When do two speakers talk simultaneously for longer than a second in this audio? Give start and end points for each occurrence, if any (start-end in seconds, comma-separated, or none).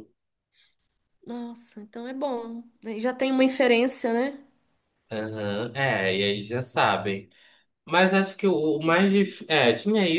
none